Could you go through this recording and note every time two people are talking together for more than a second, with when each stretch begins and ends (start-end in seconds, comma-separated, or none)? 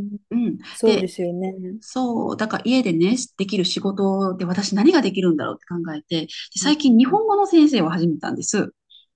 none